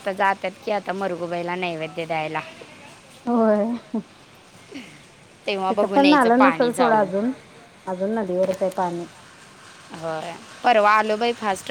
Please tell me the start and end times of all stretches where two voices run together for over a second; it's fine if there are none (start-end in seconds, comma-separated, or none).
5.7-7.1